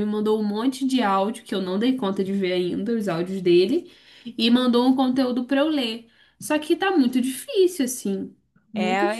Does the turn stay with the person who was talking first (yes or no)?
no